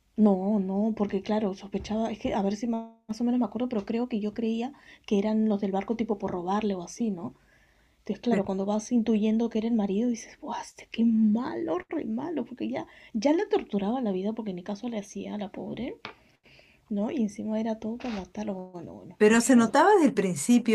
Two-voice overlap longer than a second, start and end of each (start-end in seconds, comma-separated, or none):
none